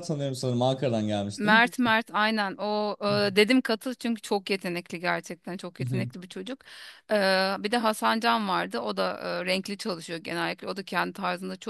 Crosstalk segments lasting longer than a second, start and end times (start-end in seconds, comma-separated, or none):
none